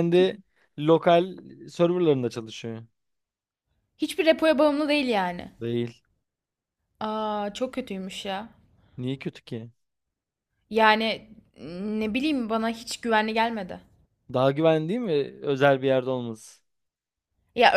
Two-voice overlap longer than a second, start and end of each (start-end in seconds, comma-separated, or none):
none